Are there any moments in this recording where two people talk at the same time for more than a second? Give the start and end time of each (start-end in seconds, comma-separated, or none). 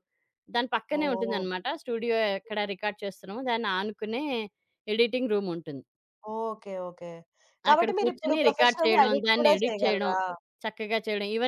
7.7-10.1